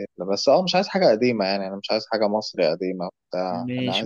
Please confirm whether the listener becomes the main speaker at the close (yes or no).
yes